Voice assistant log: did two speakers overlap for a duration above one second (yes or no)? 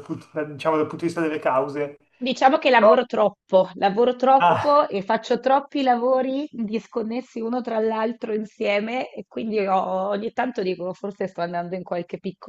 no